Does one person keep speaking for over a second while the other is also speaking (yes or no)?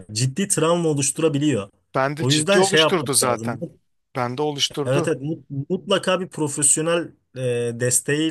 yes